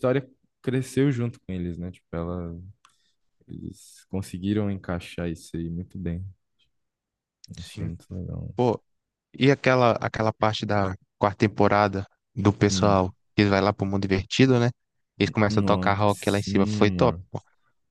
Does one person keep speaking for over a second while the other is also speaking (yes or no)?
yes